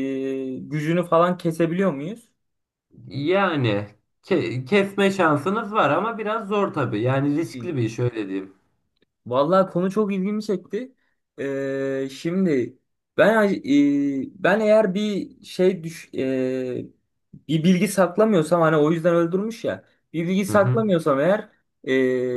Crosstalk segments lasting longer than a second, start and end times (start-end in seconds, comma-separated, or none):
none